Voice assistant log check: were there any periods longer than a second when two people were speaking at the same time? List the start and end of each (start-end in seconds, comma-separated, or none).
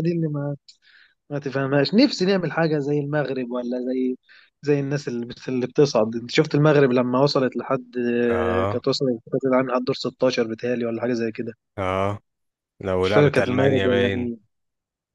13.0-14.3